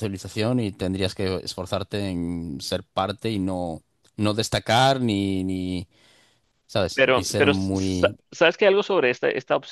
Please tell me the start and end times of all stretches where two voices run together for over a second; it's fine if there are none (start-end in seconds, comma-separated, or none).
7.0-8.2